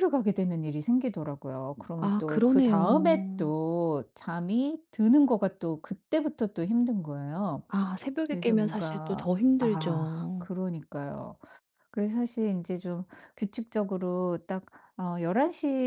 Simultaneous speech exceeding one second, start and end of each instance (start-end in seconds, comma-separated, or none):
2.0-3.5, 8.3-10.5